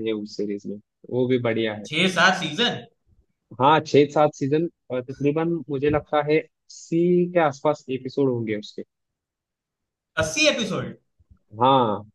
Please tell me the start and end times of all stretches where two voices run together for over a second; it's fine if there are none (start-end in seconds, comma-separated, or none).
none